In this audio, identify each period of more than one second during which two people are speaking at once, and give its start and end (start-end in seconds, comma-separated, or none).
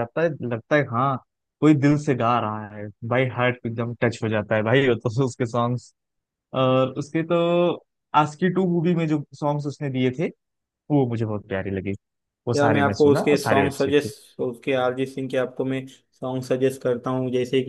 12.6-14.1